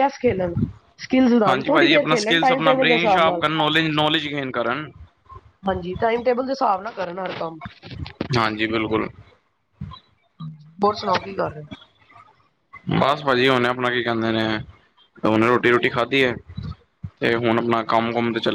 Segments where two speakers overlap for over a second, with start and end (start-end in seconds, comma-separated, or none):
1.5-3.5